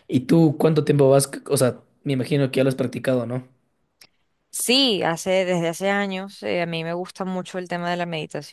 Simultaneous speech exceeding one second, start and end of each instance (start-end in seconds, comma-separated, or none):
none